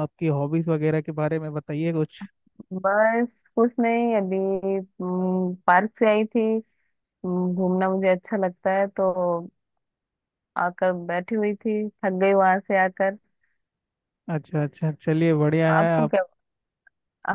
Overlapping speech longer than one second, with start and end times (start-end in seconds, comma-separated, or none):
none